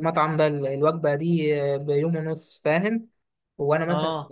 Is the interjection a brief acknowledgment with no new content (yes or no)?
yes